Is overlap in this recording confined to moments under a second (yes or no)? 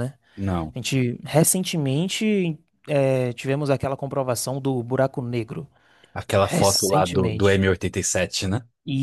no